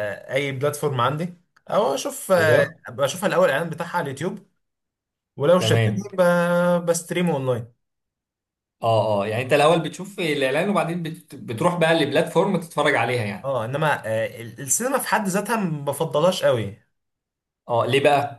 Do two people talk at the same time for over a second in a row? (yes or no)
no